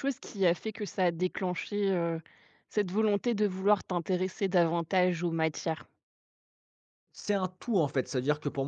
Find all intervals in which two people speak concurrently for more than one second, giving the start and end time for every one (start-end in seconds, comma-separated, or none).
none